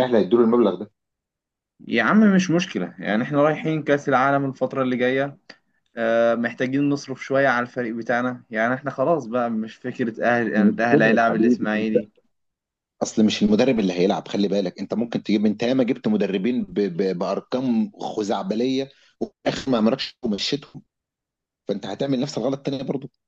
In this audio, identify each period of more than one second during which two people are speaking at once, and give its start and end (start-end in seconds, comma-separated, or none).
10.6-11.9